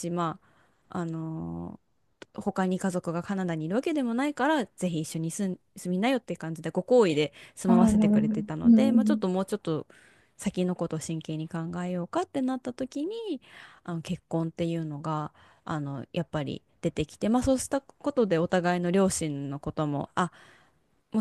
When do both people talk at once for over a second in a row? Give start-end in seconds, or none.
7.7-9.2